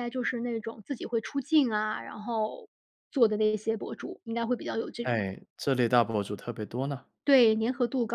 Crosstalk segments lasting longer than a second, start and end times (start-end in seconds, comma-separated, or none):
none